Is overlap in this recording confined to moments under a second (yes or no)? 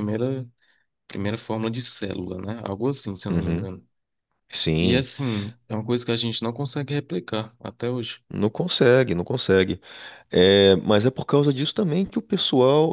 yes